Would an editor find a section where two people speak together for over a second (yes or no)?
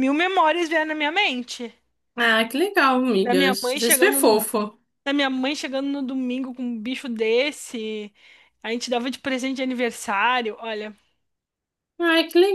yes